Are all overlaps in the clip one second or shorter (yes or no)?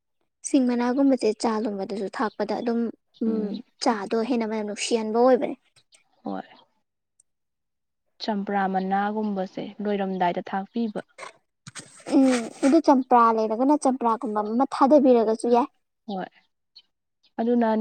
yes